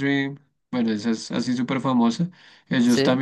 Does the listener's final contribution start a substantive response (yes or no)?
no